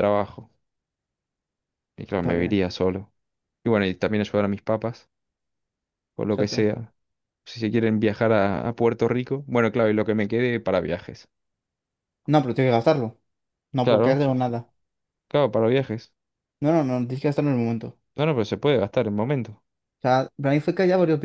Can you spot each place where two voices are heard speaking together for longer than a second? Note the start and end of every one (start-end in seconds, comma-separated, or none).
none